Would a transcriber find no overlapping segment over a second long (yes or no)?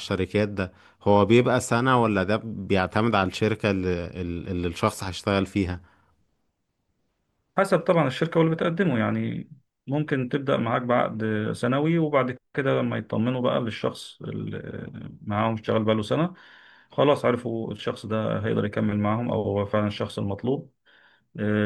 yes